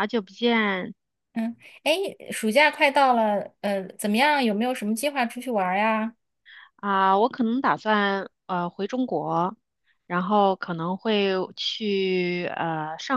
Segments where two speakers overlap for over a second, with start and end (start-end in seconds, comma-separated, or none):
none